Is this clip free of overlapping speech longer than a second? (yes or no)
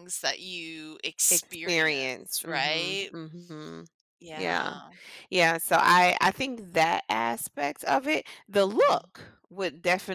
no